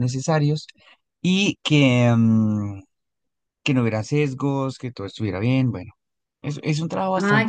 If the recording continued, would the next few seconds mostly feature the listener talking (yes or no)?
yes